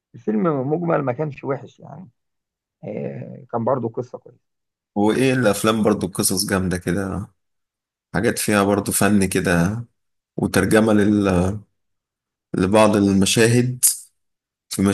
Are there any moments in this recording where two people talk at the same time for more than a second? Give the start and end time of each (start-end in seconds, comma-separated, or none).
none